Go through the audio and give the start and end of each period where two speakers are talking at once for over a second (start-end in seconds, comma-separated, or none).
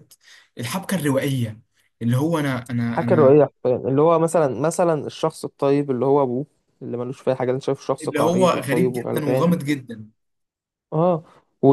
8.0-9.5